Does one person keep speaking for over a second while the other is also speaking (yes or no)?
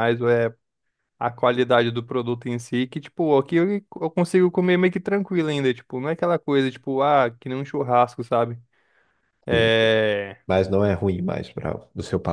no